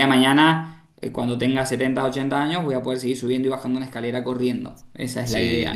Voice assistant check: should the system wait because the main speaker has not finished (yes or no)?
no